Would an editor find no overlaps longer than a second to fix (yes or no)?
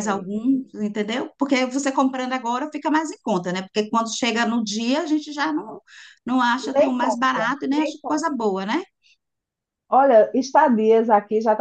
no